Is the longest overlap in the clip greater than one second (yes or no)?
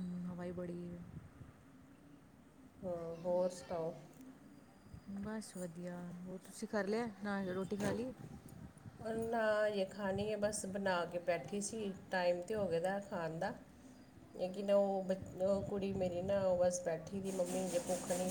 no